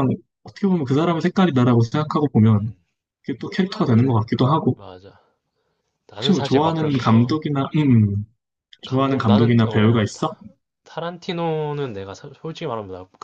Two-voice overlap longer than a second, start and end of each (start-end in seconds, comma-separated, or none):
6.2-7.4, 8.8-10.3